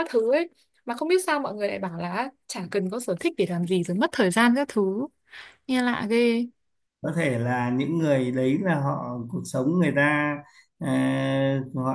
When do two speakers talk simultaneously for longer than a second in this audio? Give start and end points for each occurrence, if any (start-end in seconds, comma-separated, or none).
none